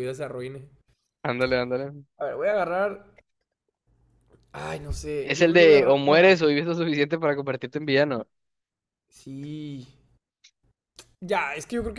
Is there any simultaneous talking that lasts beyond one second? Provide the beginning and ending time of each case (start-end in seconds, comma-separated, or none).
5.2-6.5